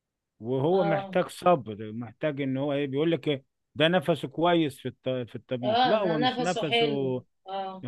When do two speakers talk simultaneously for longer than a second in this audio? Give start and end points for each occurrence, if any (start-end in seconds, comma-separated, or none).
5.6-7.2